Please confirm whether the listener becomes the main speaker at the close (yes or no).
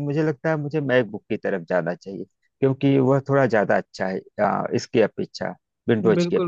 yes